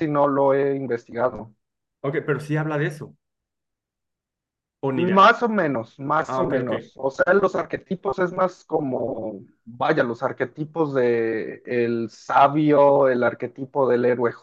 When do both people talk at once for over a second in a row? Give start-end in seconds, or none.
none